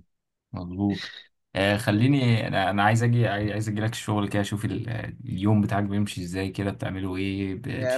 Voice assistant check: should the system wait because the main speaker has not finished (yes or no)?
no